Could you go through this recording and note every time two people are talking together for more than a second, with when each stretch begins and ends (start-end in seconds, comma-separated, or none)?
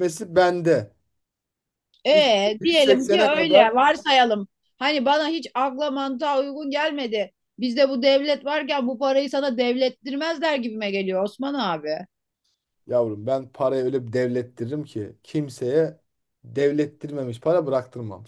2.1-3.7